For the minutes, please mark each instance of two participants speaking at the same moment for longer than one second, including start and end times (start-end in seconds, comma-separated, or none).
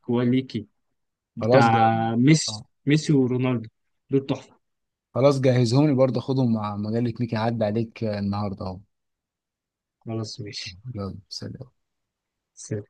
none